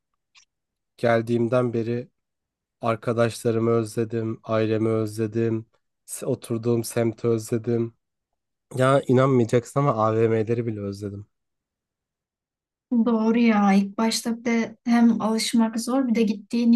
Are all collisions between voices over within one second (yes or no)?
yes